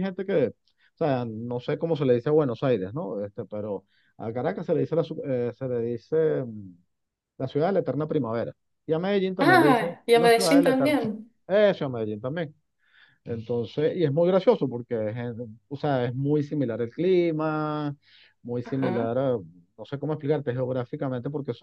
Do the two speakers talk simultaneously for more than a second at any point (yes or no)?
yes